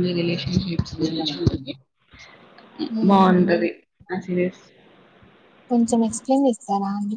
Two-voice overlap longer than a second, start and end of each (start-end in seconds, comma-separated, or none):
none